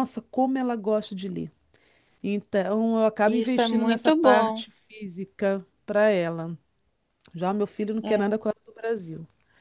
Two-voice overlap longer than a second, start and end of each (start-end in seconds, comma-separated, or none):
3.3-4.6